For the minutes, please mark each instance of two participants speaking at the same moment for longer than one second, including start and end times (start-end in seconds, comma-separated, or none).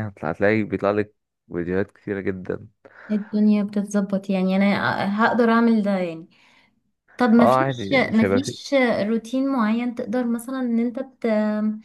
7.4-8.7